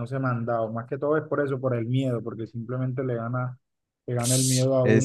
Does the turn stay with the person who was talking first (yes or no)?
yes